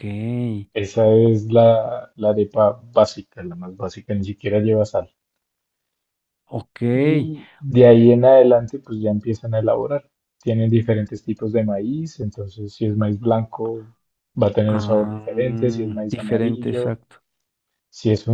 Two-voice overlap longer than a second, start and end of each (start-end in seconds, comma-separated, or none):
14.7-17.0